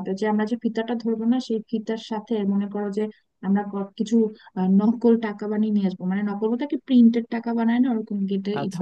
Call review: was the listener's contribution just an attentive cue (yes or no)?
yes